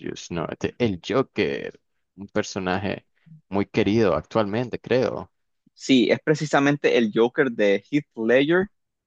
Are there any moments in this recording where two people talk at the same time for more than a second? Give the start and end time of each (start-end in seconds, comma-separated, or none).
none